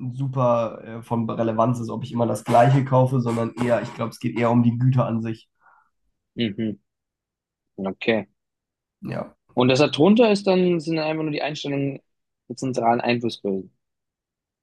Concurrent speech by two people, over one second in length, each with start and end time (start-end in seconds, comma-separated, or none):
none